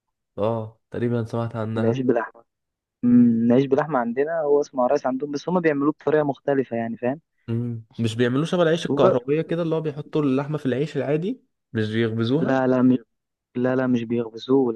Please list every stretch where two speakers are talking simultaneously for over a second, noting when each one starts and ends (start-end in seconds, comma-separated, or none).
none